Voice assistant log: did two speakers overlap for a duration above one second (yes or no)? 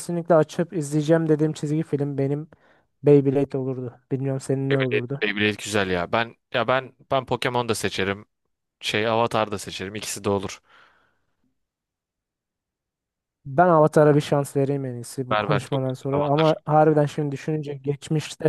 yes